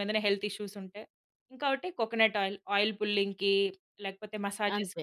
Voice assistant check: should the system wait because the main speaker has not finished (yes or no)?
no